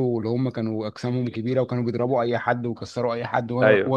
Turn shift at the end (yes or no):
no